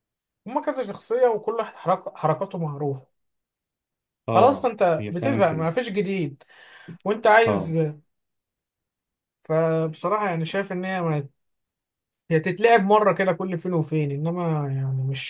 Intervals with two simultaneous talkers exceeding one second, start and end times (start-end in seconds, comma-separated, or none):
4.3-5.7